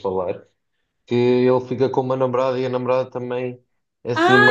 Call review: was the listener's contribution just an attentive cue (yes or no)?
no